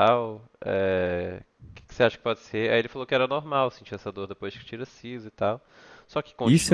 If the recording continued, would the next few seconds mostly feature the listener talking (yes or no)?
yes